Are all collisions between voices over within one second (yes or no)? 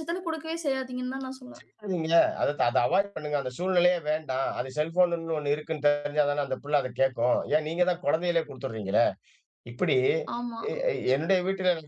yes